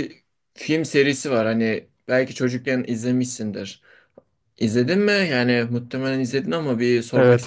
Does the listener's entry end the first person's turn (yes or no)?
yes